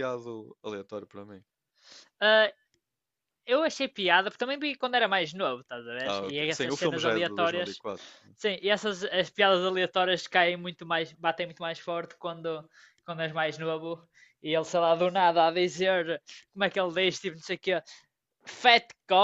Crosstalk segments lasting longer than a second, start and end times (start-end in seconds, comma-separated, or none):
6.0-7.8